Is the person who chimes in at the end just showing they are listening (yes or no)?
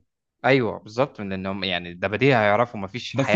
no